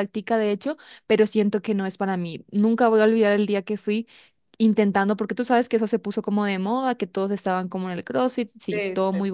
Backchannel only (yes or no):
yes